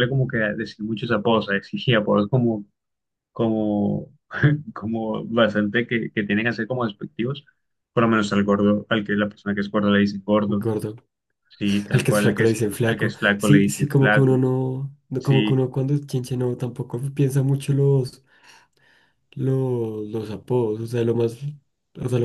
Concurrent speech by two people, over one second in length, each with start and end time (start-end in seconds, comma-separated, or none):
11.9-14.4